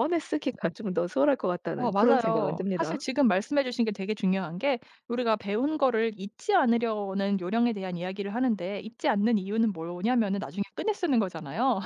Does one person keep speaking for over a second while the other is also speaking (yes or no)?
yes